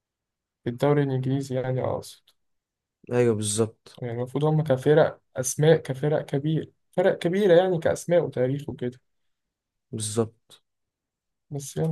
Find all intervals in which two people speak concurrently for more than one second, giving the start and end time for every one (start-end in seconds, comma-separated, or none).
none